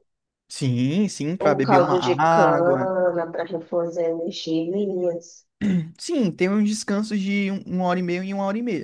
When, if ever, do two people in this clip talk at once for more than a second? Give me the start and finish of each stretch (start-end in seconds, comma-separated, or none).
1.4-2.9